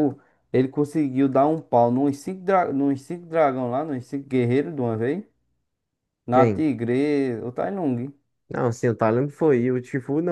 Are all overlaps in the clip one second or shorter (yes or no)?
yes